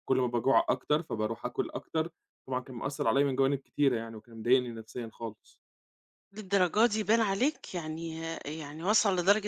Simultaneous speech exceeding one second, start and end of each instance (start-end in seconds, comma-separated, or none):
none